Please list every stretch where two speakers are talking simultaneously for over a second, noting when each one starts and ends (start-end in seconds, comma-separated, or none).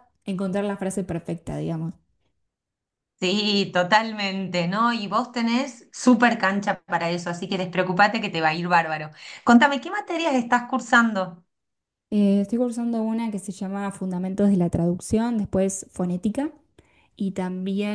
none